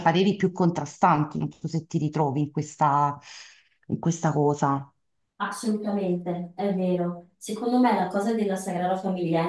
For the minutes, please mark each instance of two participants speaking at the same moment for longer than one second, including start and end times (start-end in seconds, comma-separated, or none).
none